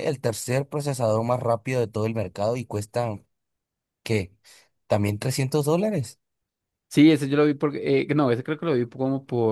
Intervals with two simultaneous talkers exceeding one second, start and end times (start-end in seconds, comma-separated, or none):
none